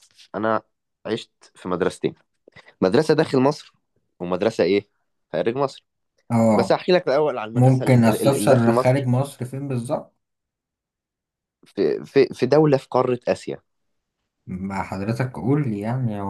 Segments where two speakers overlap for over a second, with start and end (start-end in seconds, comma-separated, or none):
7.5-9.1